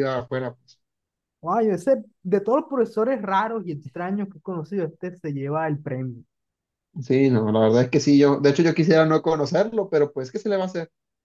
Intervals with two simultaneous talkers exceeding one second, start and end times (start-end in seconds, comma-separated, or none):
none